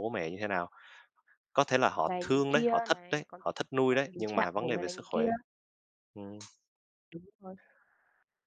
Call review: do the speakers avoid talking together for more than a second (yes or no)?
no